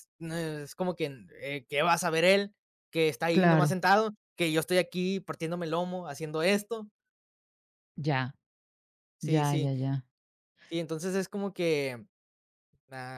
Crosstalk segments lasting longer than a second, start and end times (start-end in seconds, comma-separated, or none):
none